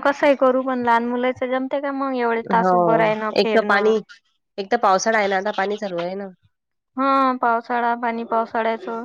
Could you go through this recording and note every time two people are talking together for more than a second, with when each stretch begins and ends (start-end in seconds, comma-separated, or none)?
none